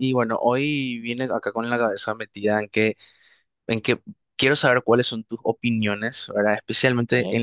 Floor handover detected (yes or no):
no